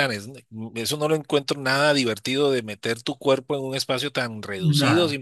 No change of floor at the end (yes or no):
yes